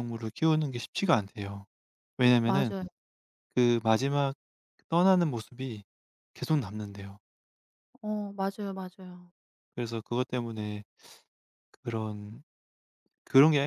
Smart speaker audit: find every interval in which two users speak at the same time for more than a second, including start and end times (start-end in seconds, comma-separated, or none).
none